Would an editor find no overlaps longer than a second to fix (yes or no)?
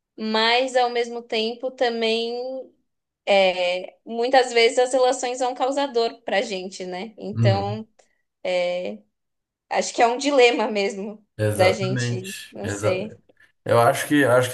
no